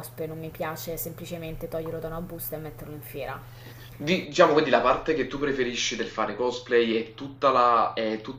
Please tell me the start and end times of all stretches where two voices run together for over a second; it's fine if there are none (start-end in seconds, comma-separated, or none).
none